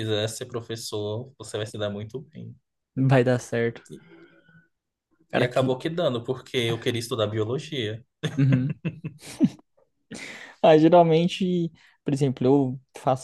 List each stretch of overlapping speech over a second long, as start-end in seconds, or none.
none